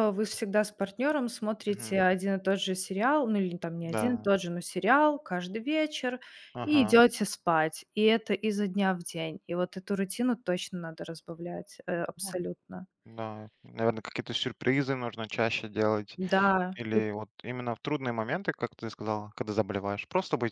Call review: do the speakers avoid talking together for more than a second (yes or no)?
yes